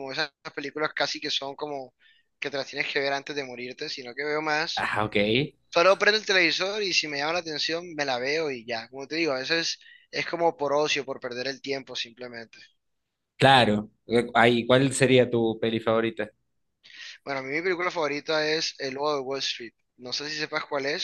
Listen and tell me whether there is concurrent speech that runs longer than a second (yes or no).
no